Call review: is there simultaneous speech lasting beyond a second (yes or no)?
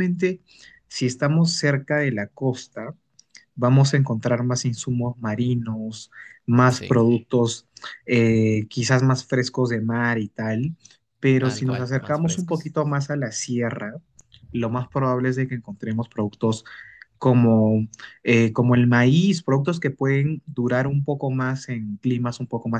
yes